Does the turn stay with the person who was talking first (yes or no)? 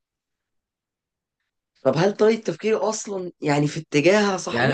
no